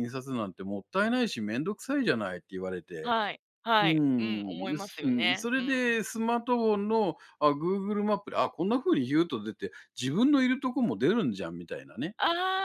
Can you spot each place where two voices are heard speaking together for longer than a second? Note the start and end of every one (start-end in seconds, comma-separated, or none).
3.8-6.0